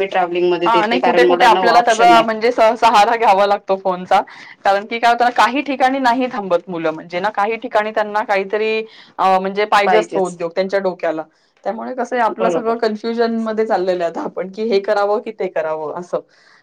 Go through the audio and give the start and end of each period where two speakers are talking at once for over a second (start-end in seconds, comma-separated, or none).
0.7-2.2